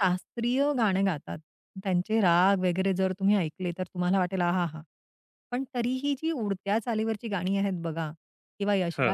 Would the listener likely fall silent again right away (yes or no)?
yes